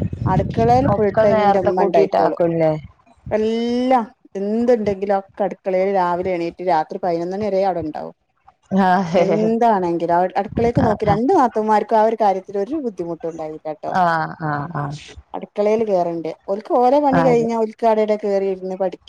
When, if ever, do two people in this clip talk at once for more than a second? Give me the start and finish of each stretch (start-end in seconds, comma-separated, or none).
0.9-2.4